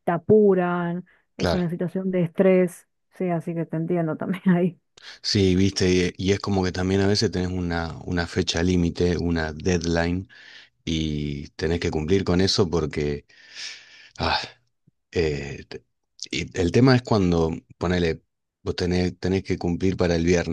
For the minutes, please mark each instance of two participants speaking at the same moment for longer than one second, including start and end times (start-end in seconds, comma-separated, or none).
none